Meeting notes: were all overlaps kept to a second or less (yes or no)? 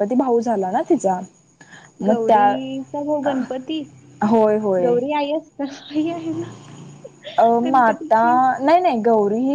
no